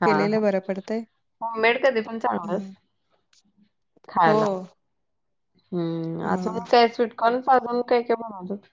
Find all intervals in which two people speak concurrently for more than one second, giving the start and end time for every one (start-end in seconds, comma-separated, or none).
none